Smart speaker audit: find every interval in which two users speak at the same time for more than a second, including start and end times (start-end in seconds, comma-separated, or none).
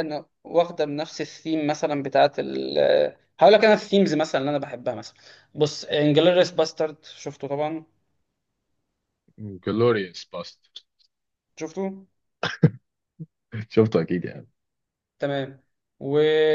none